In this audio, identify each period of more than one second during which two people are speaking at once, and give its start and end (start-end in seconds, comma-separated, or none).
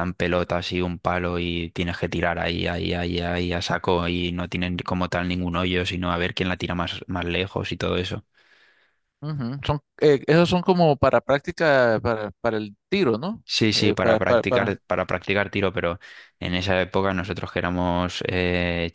13.5-14.8